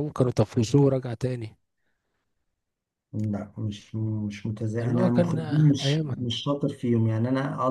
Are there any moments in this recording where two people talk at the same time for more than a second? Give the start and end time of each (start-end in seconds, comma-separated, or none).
4.8-6.3